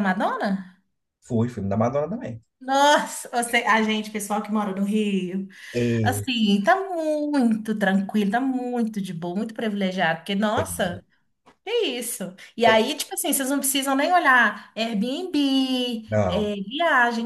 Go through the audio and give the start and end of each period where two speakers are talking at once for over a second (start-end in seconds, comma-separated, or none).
none